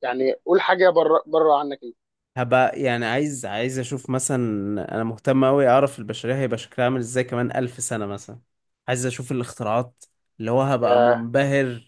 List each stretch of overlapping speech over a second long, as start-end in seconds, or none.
none